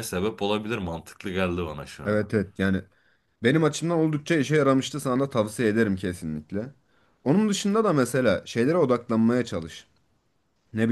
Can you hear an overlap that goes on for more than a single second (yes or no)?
no